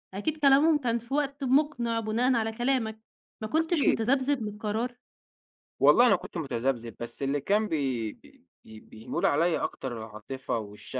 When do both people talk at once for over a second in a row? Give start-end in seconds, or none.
none